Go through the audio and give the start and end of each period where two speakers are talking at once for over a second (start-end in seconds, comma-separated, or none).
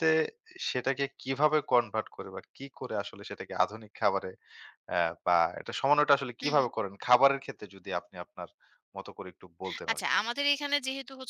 none